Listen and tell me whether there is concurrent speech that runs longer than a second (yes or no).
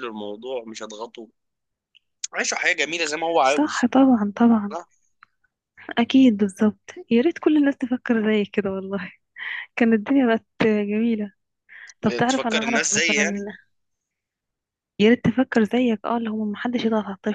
yes